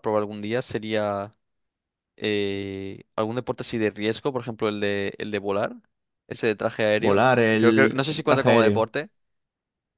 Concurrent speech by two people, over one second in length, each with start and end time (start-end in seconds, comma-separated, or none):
7.0-8.9